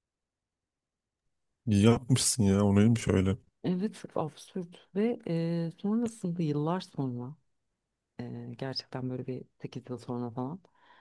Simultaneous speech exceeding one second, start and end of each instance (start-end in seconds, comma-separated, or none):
none